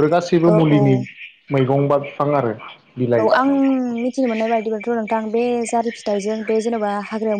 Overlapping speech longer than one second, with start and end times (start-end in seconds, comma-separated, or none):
none